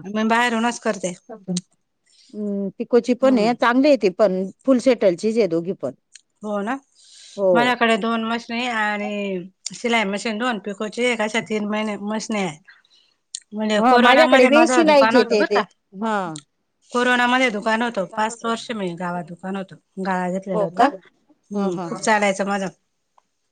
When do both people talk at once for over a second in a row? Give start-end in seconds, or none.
13.8-15.6